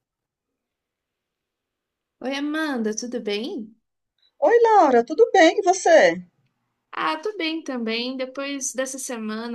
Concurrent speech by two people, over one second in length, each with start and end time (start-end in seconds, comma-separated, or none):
none